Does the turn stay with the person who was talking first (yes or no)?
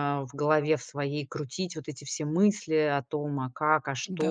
yes